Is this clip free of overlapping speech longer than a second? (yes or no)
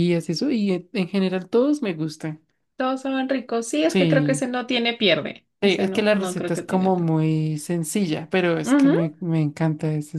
no